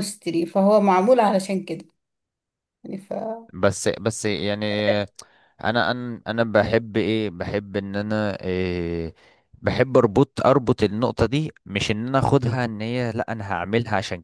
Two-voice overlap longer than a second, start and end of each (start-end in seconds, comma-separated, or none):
none